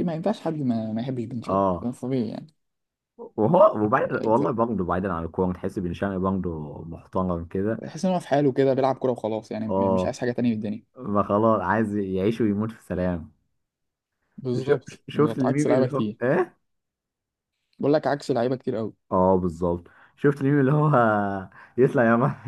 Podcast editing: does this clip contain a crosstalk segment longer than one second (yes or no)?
yes